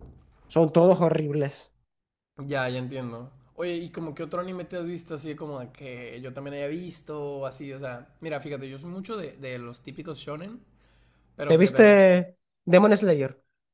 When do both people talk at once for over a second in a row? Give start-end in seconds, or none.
none